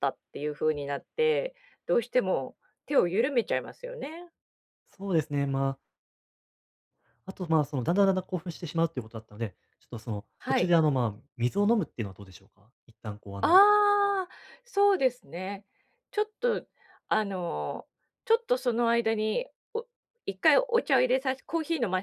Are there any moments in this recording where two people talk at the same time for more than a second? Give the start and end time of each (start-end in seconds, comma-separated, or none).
none